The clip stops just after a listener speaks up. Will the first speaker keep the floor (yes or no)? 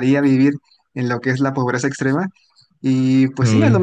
yes